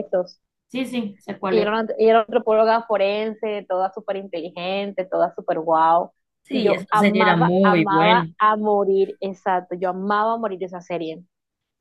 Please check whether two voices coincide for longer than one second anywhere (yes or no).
yes